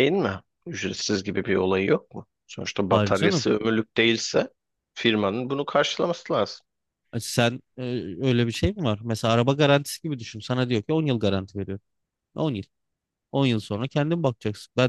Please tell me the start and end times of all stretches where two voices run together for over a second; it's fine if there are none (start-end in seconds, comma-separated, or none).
none